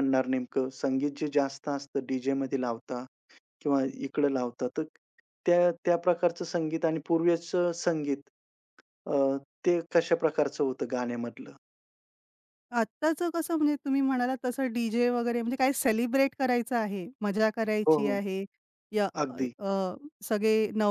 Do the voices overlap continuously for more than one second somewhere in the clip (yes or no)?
no